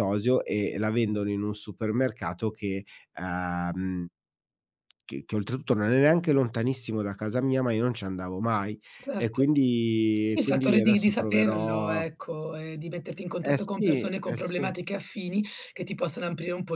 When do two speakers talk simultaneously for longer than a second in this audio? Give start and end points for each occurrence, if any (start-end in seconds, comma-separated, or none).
10.3-12.0, 13.4-14.7